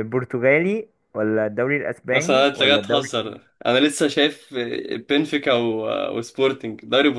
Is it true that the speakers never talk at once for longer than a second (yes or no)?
no